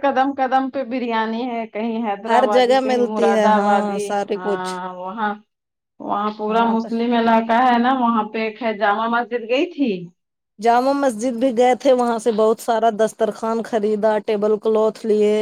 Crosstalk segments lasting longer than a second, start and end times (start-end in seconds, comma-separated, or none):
2.3-4.7